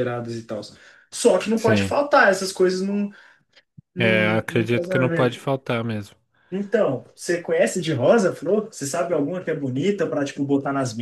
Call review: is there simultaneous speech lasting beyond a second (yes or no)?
yes